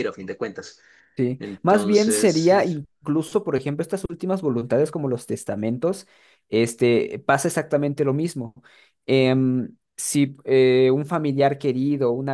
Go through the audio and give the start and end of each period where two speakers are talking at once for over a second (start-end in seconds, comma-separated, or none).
1.4-2.8